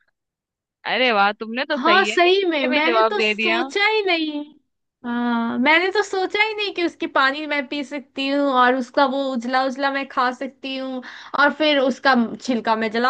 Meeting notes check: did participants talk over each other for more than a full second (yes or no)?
yes